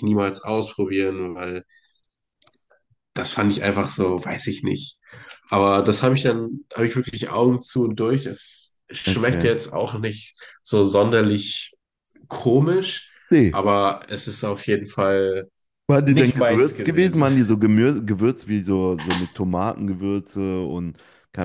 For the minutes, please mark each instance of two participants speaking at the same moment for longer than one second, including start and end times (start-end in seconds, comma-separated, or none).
16.1-17.3